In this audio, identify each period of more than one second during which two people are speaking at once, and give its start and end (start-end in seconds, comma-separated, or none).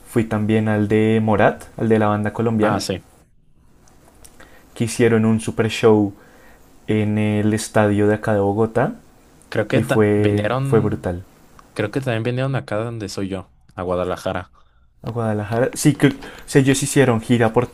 9.7-11.1